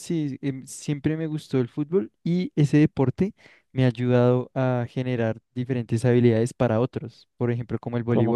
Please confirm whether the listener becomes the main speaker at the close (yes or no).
no